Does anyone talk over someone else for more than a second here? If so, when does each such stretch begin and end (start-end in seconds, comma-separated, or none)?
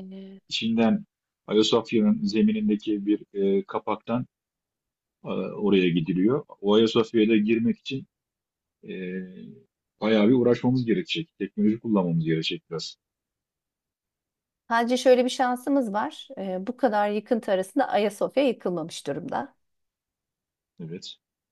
none